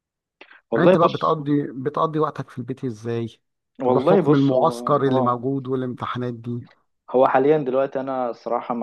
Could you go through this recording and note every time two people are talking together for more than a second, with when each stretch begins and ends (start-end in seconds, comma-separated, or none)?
3.9-5.5